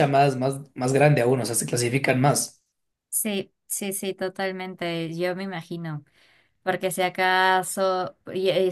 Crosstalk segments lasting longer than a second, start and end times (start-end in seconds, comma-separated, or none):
none